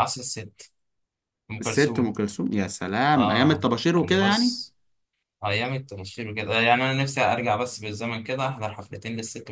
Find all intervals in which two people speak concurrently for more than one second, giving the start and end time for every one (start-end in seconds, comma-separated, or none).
3.1-4.5